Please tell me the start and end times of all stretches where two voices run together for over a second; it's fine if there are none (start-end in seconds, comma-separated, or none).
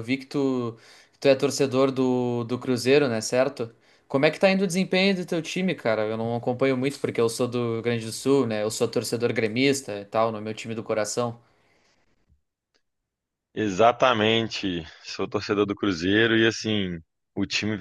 none